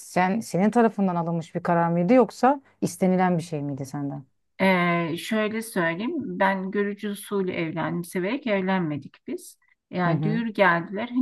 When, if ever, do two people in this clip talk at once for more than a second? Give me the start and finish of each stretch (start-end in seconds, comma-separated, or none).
none